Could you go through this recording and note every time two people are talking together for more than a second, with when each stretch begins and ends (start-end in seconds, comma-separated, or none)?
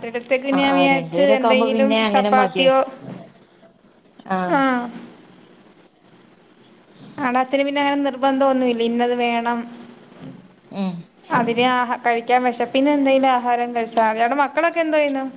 0.6-2.7